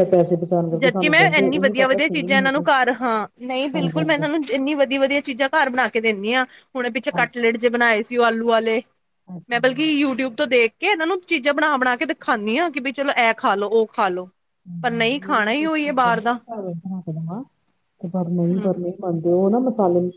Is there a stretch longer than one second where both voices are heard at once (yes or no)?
yes